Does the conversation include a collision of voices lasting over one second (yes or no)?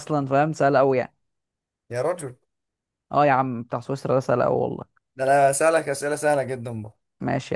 no